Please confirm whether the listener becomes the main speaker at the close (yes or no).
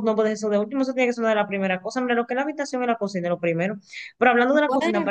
no